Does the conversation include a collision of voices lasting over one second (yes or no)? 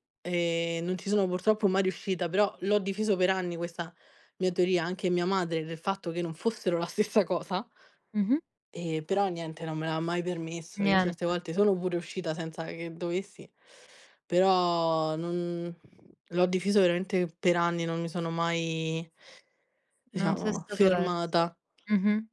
yes